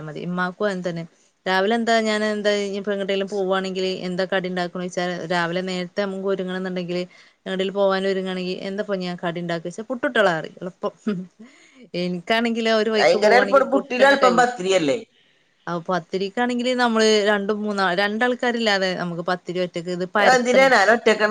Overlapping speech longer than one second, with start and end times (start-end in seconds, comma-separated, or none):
13.0-14.5